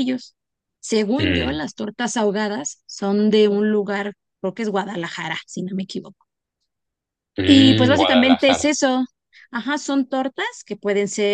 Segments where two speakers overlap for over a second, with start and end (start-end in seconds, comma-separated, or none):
7.5-8.7